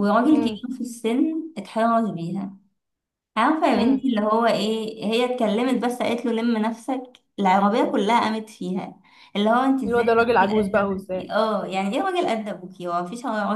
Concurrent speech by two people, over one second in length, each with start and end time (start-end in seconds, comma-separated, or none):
9.8-11.3